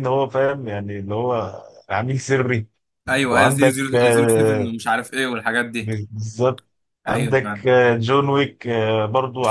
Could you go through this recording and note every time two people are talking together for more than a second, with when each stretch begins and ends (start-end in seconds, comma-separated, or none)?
3.3-4.7